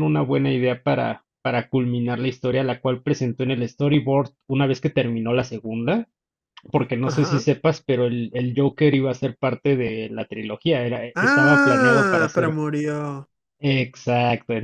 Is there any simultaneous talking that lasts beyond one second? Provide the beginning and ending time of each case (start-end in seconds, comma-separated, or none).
11.2-12.6